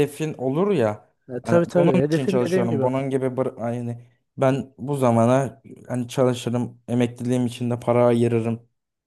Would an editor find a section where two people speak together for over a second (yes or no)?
yes